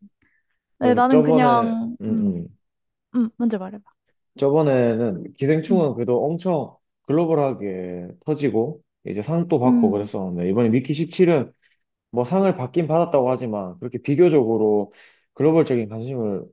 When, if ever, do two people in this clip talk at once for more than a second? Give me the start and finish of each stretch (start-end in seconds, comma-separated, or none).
0.8-2.4